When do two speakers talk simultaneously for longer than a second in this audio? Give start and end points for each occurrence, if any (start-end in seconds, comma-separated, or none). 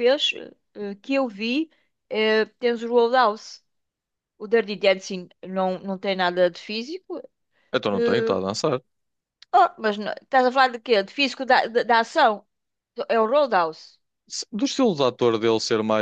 none